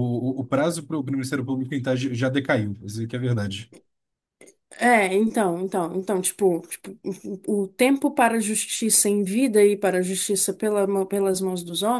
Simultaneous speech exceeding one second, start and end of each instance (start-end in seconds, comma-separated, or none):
none